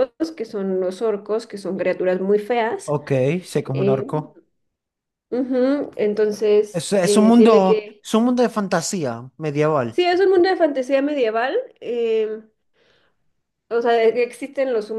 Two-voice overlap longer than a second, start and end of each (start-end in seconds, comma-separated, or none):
6.7-8.0